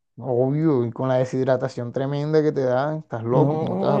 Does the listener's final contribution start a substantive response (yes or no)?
yes